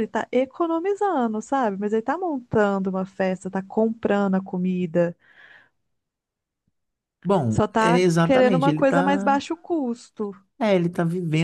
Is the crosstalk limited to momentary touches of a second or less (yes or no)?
no